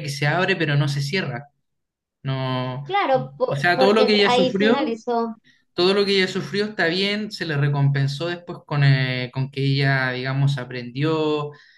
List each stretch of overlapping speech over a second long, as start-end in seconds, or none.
3.4-5.0